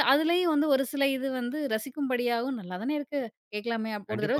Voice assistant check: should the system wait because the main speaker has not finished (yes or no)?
no